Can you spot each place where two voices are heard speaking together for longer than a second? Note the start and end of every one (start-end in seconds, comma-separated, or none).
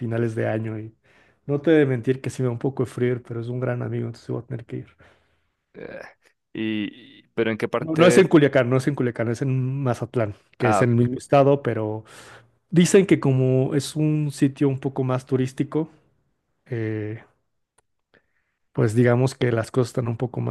none